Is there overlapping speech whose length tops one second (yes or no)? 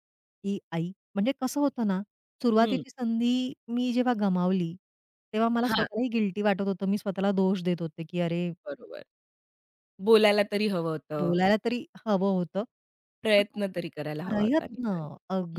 no